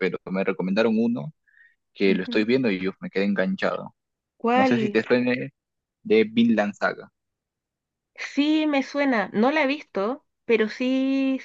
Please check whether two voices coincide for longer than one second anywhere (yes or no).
no